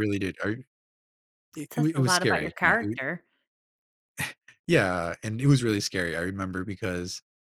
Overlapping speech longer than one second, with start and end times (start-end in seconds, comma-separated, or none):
1.7-3.0